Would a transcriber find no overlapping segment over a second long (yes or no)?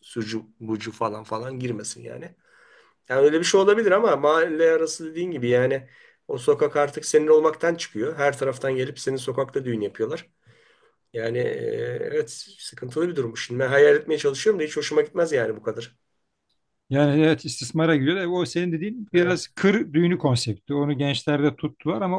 yes